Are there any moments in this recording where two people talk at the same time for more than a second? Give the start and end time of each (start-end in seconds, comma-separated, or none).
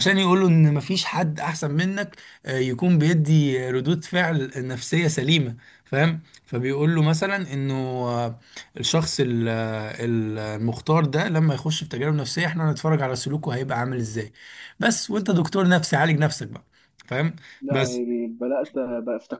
none